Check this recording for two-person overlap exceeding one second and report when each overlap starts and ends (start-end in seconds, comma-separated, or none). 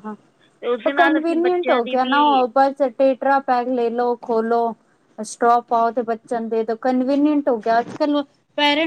0.9-2.4